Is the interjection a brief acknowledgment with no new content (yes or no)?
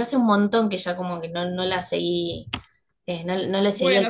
no